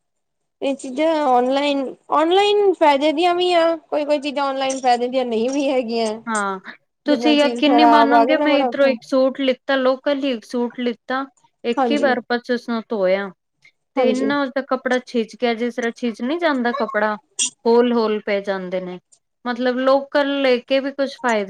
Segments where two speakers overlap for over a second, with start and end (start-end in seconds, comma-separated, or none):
7.1-8.9